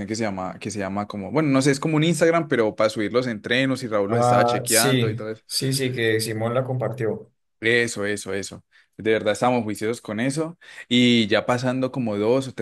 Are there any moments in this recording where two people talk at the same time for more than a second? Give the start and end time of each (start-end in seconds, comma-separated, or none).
4.1-5.3